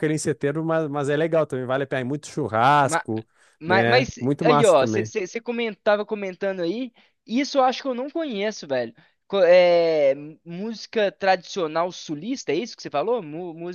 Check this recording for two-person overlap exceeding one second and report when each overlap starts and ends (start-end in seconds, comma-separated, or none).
3.7-5.1